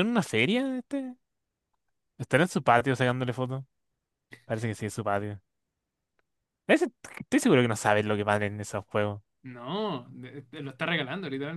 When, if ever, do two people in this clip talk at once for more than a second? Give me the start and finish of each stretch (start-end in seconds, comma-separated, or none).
none